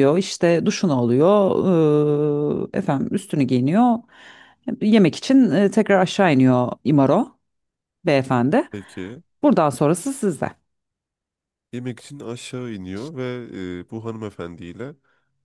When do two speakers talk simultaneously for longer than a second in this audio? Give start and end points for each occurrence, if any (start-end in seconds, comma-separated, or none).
none